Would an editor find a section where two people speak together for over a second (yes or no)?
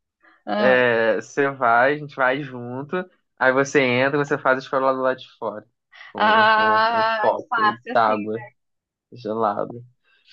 yes